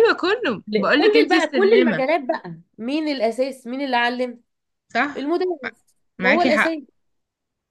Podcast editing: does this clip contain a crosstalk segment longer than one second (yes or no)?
yes